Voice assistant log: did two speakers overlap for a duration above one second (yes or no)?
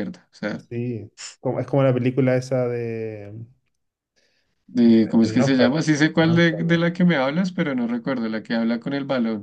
yes